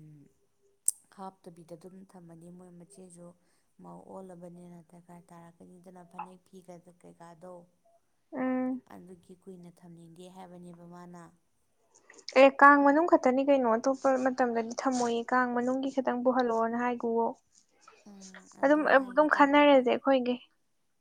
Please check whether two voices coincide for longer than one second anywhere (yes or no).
yes